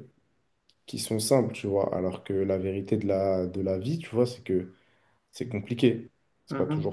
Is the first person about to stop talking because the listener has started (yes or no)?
no